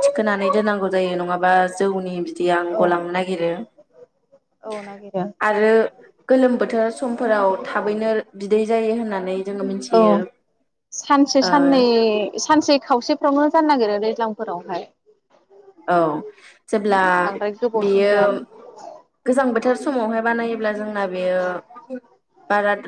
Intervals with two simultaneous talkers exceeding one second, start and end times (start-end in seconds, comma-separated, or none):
none